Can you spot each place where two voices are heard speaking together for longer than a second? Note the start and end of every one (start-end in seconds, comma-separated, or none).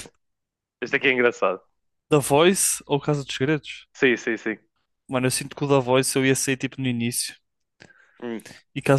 none